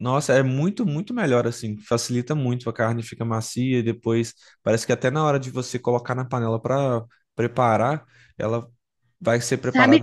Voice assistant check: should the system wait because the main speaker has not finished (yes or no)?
no